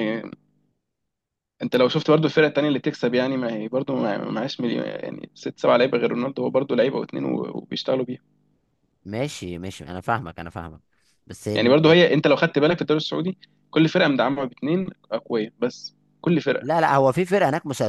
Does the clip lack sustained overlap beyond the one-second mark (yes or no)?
yes